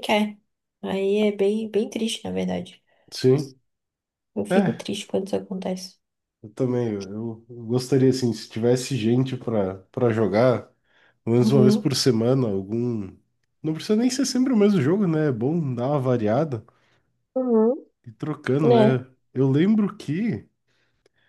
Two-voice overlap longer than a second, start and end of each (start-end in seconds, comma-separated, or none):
none